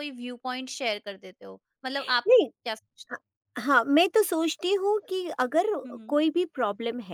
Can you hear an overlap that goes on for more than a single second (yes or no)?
no